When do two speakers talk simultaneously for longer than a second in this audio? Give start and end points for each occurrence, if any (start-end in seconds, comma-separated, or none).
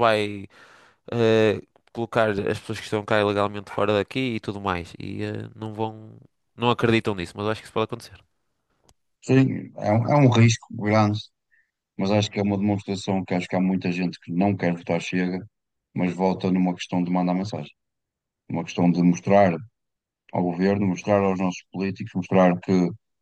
none